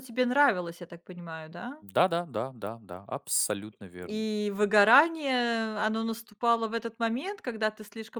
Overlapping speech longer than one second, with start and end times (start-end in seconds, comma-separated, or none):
none